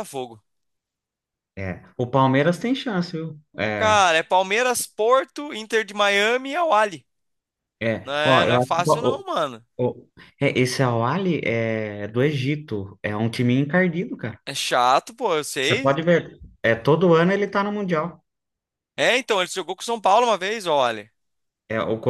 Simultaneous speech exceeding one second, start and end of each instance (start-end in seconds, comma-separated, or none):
8.0-9.2